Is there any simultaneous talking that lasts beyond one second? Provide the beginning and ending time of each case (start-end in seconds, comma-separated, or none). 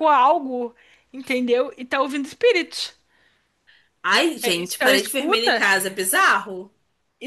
4.4-5.6